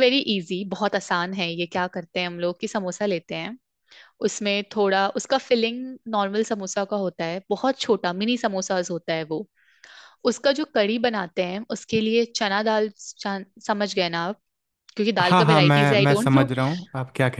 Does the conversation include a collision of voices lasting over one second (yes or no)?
yes